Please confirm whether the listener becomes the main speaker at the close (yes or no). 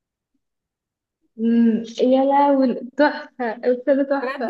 yes